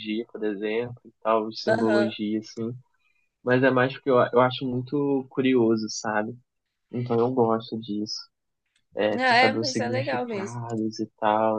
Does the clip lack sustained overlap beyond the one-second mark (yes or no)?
no